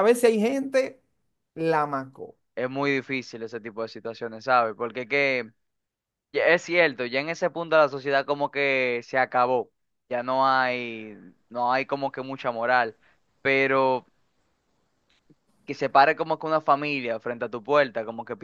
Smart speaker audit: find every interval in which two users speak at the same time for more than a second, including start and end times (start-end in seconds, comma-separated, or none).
none